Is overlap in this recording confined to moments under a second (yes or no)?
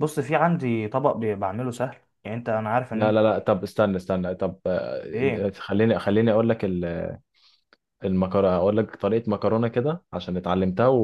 yes